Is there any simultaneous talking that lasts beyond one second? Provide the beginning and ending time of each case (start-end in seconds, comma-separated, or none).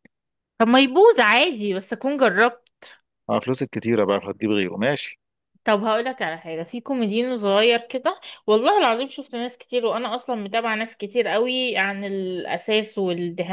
none